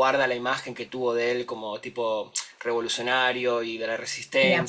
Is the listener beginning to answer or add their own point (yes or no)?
yes